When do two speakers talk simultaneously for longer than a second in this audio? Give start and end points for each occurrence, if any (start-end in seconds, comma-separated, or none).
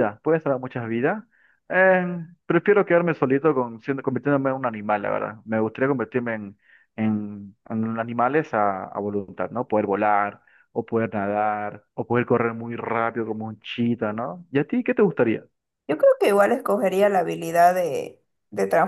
none